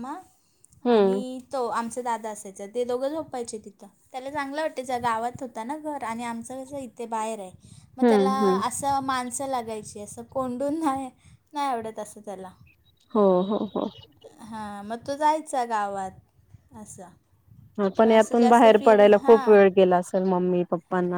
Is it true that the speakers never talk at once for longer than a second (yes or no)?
no